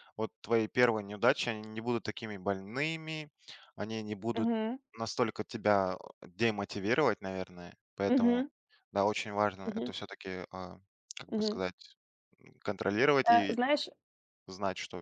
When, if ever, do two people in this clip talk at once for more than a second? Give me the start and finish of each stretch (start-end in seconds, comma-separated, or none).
none